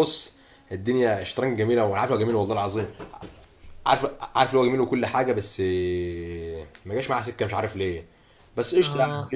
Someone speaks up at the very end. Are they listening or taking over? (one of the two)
listening